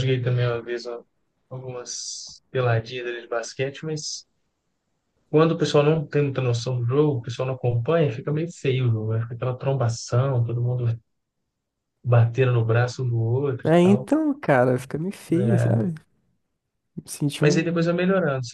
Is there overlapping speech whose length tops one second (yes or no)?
no